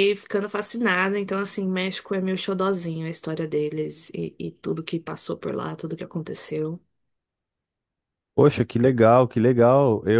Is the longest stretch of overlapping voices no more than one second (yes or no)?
yes